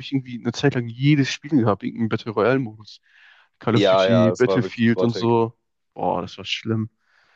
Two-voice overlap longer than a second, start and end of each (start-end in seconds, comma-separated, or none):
3.7-5.4